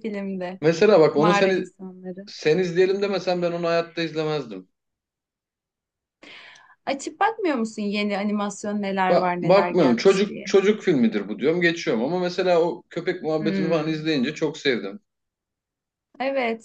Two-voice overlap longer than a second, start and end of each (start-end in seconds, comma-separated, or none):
9.1-10.5